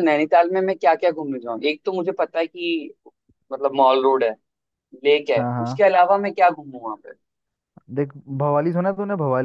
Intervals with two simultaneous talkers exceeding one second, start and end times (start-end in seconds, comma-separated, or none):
none